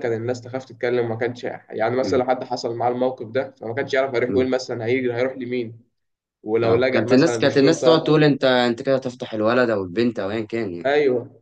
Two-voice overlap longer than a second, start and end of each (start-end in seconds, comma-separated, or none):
6.6-8.2